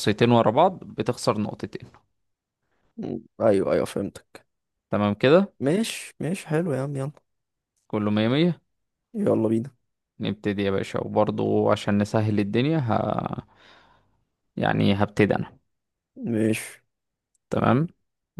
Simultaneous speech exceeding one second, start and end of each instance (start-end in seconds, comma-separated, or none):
none